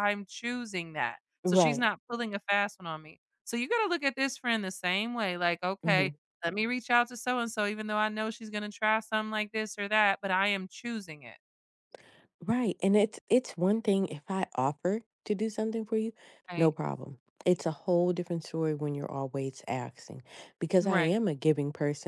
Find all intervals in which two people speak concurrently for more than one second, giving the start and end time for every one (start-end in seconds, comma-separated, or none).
none